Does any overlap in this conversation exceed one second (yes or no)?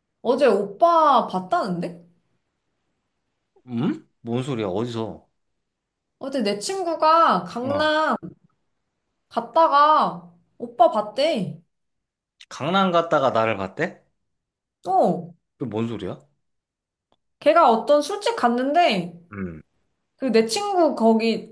no